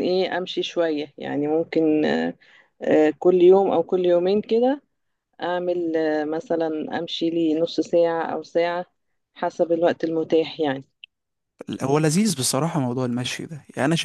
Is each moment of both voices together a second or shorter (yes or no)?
yes